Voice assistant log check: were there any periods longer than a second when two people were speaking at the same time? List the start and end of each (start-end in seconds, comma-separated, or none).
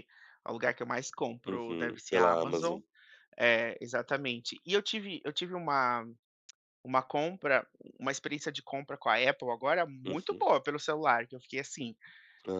1.5-2.8